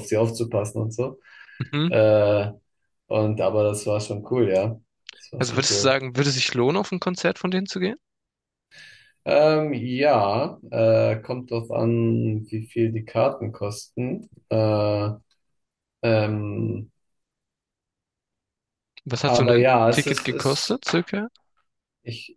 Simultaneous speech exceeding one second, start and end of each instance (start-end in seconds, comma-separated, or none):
19.2-20.8